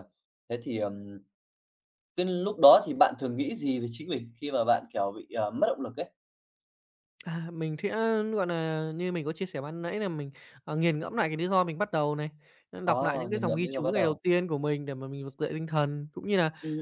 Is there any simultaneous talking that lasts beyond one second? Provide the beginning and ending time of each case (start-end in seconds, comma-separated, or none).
12.8-14.2